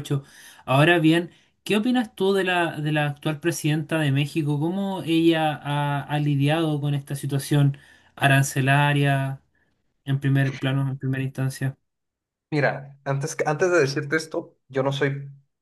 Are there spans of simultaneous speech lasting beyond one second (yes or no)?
no